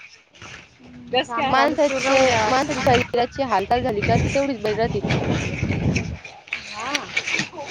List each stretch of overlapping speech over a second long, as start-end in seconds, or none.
1.5-2.7